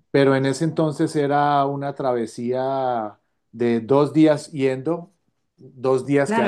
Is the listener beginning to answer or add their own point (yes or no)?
yes